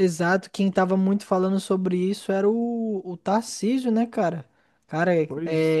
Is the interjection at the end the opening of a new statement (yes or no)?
no